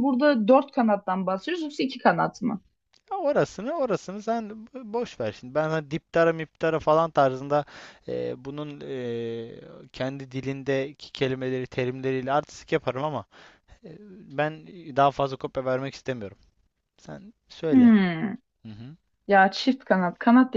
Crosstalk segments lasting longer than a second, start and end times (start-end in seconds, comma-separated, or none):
none